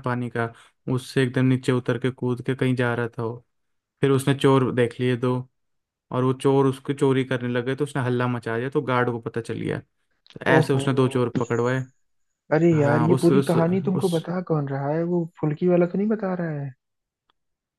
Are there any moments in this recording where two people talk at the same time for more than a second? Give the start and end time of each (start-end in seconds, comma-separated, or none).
12.7-14.1